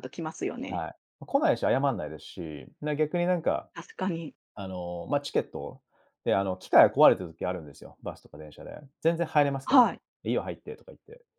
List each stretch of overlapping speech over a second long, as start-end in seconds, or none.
none